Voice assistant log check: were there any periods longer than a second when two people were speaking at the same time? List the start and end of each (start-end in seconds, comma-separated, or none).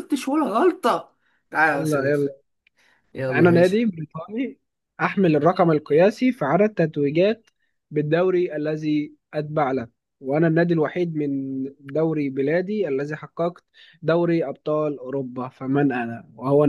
none